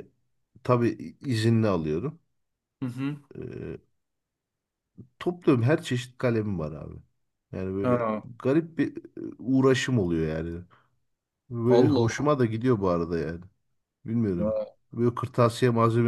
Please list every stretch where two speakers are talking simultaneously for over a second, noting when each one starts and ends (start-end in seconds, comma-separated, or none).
none